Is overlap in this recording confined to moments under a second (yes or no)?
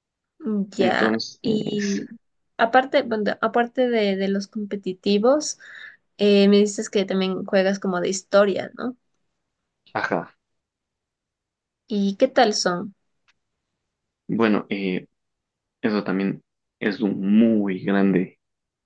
no